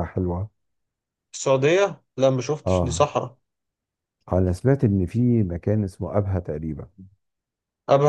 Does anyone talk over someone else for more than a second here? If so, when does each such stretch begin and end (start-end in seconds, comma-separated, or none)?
none